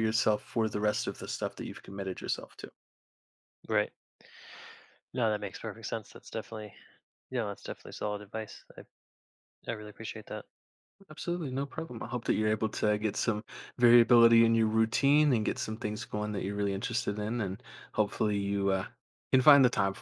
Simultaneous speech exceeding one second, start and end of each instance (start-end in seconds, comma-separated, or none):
none